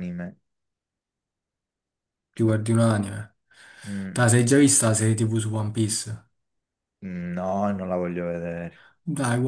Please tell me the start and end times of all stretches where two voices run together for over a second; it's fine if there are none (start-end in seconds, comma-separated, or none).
none